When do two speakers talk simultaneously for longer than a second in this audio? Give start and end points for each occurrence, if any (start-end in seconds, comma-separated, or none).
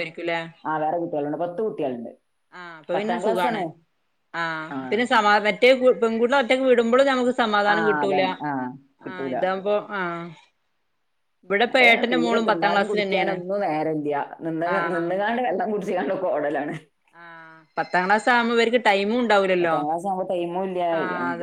none